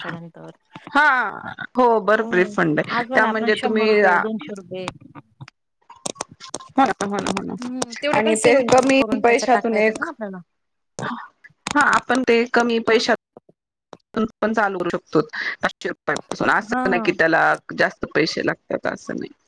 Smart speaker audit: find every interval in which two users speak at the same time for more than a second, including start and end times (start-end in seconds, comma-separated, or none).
2.2-4.0, 8.2-10.0